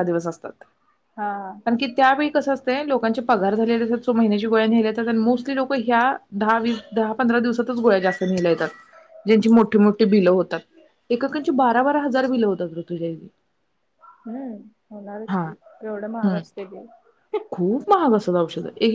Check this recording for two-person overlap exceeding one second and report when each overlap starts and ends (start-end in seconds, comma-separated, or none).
none